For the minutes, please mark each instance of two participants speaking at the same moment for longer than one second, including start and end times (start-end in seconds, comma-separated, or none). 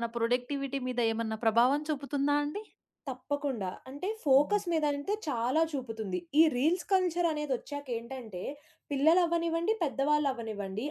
none